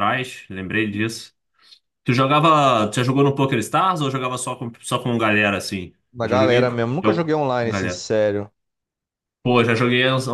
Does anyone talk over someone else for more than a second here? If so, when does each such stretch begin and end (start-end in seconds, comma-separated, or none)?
6.1-8.1